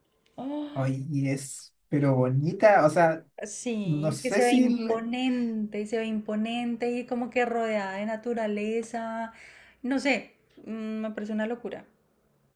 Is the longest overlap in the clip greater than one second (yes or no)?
yes